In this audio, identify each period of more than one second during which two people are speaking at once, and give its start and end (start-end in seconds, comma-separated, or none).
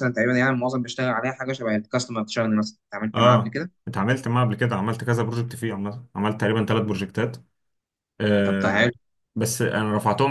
none